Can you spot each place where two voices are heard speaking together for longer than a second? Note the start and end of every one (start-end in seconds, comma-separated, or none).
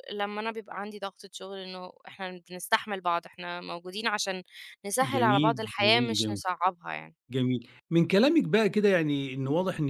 5.0-6.4